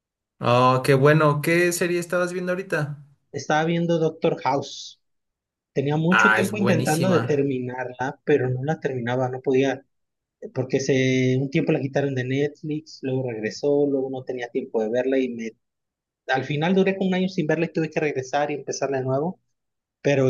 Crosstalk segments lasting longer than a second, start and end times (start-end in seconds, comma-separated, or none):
6.1-7.5